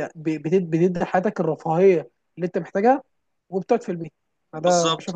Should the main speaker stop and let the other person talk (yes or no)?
yes